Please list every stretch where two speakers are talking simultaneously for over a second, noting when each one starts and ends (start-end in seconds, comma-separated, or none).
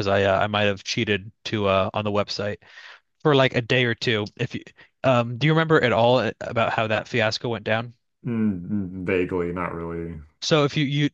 none